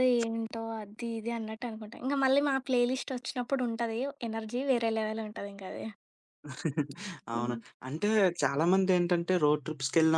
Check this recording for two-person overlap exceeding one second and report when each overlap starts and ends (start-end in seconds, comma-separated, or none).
none